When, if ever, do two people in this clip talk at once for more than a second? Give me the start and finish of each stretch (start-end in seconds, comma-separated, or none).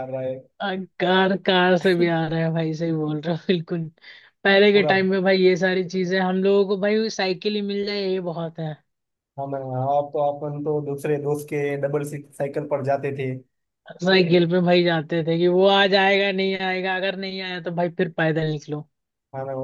none